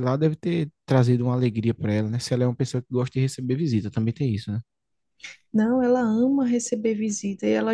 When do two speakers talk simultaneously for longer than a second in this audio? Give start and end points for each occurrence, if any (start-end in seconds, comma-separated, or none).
none